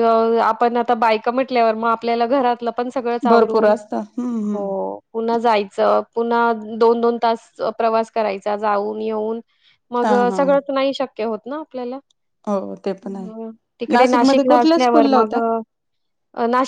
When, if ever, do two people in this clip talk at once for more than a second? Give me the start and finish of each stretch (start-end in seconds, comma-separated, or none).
13.9-15.3